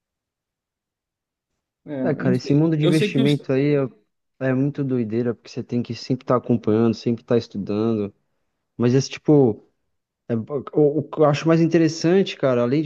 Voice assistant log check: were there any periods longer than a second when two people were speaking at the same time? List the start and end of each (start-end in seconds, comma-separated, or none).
2.0-3.5